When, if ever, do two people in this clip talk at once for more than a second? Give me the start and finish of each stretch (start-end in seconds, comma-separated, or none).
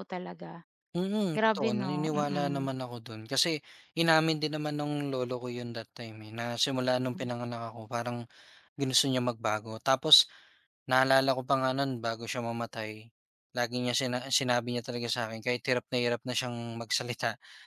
1.3-2.7